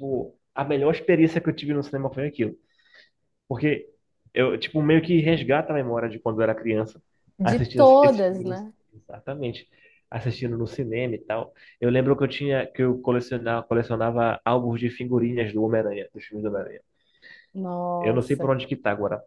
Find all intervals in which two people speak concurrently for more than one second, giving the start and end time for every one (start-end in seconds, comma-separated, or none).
7.4-8.7